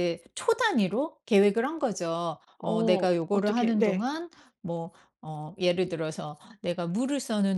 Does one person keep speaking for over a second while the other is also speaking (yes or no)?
yes